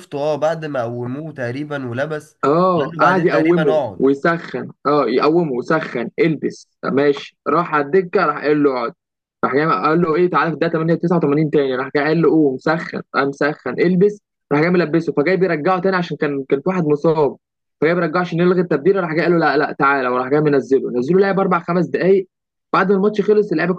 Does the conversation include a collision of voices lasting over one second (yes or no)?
yes